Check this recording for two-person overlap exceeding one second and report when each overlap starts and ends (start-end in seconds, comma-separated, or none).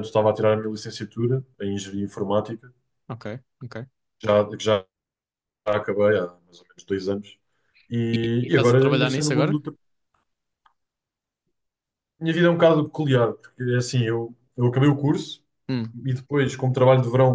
8.1-9.6